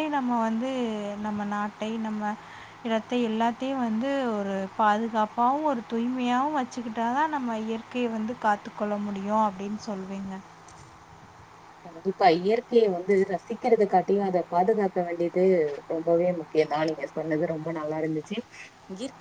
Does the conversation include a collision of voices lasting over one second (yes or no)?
no